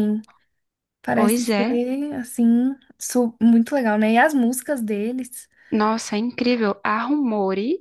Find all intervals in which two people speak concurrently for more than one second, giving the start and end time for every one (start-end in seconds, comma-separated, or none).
none